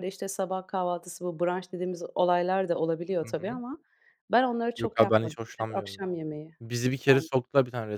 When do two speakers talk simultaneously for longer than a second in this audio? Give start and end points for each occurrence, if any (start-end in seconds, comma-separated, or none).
4.8-6.0